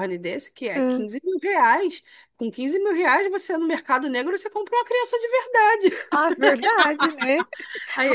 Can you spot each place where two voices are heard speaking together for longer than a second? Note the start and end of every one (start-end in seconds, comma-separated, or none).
none